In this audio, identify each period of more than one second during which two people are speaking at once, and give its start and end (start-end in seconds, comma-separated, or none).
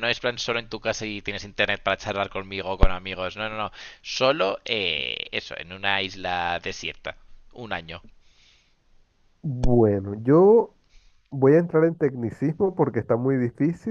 none